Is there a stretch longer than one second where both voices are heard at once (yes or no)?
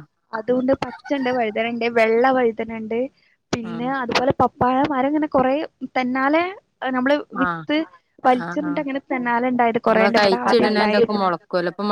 yes